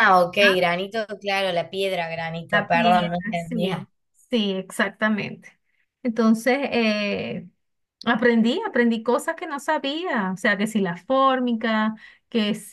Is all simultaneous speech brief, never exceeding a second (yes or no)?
no